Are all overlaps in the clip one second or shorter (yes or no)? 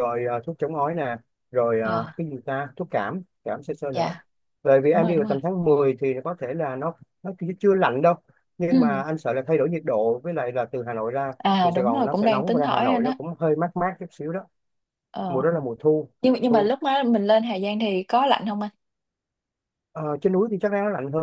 no